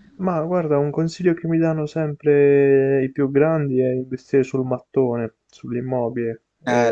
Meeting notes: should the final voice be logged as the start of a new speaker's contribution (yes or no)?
yes